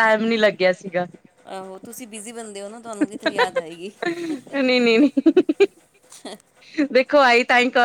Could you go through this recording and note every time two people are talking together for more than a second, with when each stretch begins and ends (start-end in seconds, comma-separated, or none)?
none